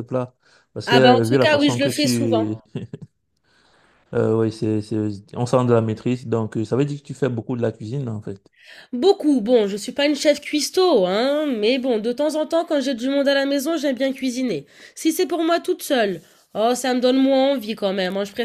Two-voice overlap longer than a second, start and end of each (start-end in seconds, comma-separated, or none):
0.9-2.5